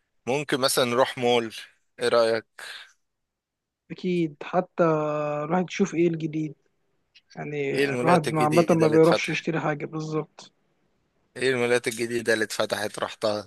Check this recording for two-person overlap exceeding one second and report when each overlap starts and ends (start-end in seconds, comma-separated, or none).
7.7-9.5